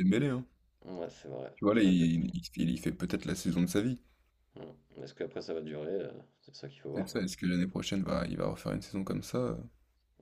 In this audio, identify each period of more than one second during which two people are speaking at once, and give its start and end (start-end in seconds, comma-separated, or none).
none